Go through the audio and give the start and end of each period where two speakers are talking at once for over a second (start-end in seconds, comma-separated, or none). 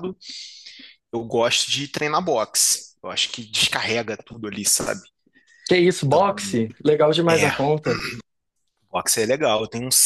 none